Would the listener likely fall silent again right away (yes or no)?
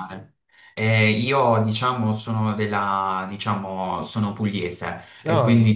yes